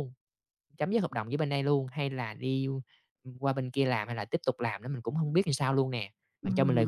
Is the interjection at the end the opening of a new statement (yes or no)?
yes